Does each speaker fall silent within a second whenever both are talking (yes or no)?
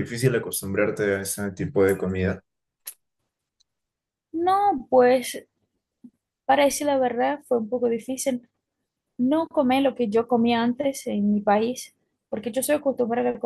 yes